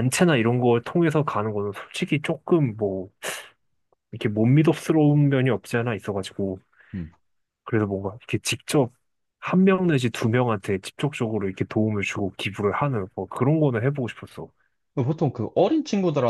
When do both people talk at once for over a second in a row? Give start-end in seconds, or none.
none